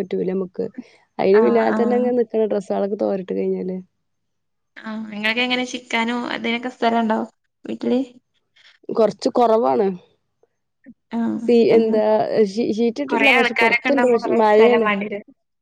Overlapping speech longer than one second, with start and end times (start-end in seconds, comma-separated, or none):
13.1-14.9